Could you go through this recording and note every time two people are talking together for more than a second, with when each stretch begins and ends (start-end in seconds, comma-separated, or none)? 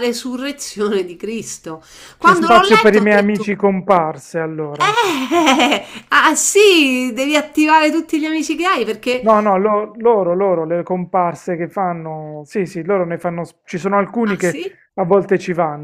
2.2-3.5